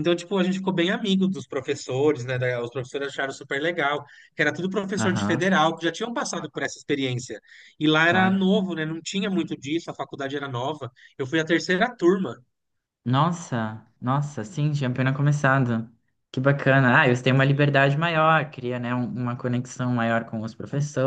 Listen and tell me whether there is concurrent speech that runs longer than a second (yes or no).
no